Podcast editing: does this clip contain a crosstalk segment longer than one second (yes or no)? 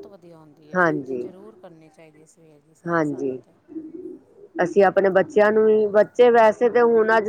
no